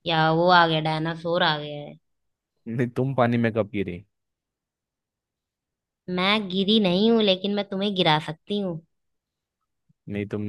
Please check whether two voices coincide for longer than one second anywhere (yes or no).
no